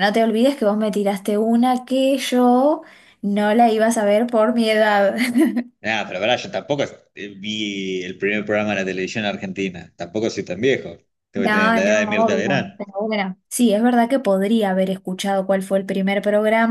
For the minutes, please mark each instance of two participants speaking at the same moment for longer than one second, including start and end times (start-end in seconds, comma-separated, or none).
11.3-12.7